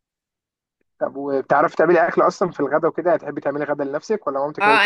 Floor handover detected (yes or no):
yes